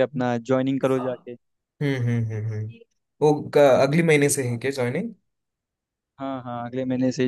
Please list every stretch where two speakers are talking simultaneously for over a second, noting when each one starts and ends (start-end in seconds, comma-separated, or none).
none